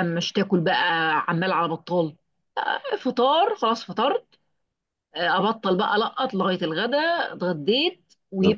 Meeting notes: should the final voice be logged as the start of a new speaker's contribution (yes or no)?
no